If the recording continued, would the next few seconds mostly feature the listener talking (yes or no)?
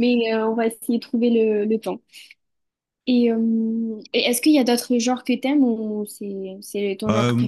yes